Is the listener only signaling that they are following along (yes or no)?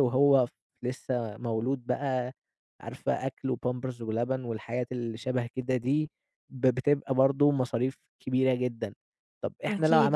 yes